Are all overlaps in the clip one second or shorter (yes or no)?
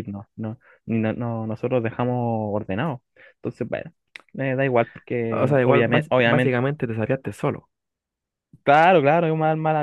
no